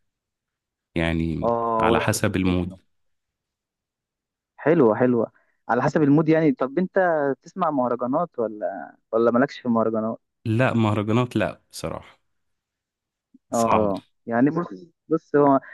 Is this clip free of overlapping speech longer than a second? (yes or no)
no